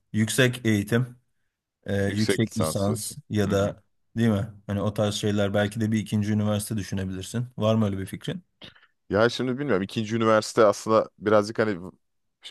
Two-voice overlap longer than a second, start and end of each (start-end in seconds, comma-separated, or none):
2.1-3.8